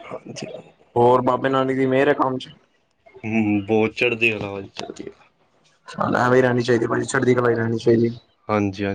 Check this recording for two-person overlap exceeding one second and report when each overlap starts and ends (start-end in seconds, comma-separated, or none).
none